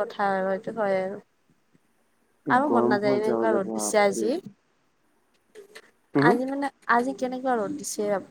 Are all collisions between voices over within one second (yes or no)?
no